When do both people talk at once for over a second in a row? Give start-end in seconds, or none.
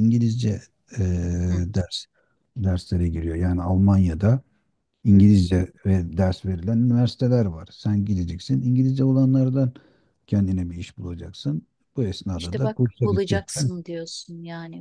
12.4-13.7